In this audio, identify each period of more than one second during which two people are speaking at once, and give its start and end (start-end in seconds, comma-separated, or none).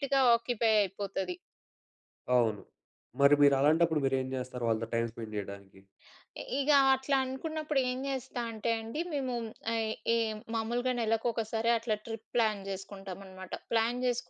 none